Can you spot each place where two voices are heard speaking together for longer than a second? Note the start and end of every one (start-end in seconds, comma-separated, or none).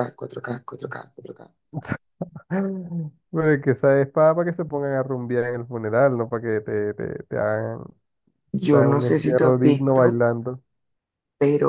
8.7-10.2